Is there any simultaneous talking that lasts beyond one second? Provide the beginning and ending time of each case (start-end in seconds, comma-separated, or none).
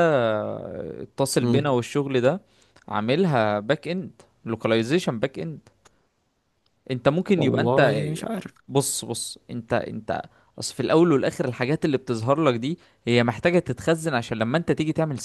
none